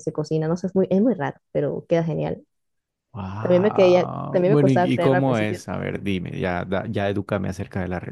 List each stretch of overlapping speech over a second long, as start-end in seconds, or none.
3.4-5.6